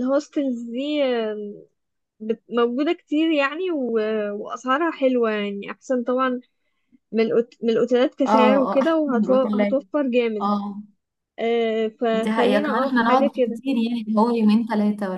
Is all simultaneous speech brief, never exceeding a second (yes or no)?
no